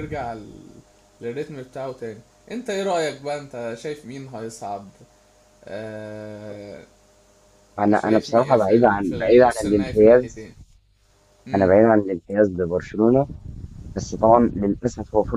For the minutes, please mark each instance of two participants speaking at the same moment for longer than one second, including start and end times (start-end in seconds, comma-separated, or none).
7.9-10.5